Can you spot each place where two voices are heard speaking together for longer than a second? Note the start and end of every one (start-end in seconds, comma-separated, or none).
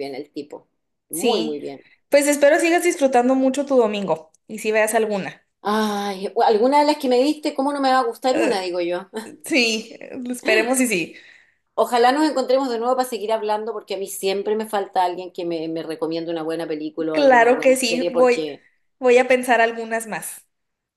17.1-18.4